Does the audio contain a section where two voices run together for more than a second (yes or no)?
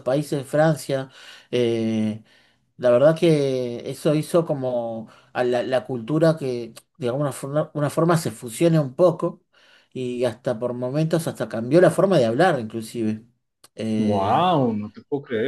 no